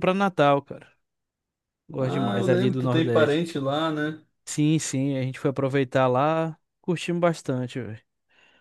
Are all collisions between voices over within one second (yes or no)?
no